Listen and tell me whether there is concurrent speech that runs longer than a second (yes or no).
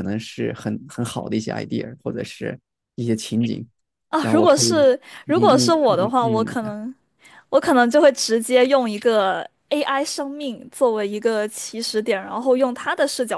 yes